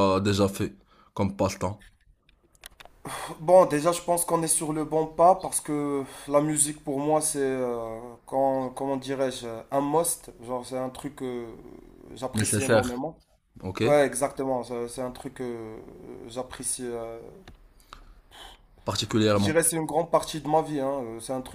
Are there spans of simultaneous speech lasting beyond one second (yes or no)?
no